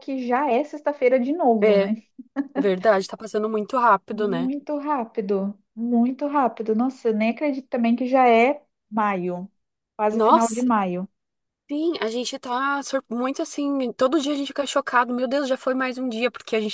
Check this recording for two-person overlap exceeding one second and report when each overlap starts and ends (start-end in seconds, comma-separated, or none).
none